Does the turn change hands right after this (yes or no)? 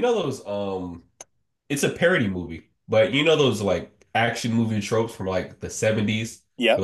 no